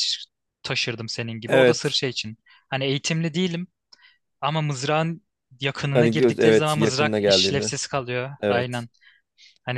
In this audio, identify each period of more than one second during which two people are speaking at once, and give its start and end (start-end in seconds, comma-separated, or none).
5.9-7.7